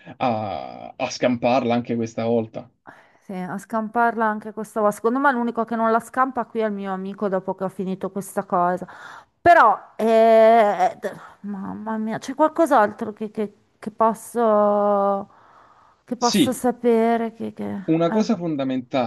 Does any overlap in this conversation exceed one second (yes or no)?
no